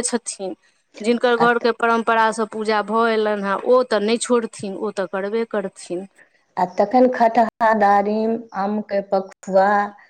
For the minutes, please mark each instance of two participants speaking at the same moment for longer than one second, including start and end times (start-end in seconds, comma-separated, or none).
none